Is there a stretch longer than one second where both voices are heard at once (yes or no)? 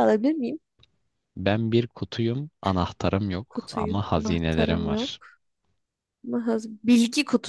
yes